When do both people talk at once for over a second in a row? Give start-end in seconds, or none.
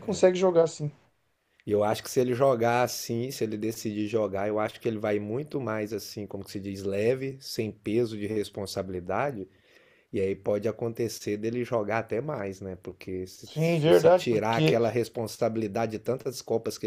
13.4-14.8